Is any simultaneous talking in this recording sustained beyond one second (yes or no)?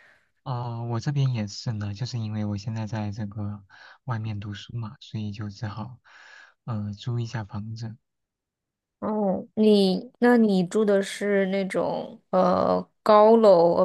no